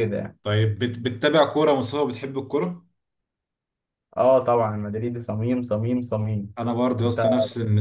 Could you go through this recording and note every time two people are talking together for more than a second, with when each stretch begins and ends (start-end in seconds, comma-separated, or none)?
none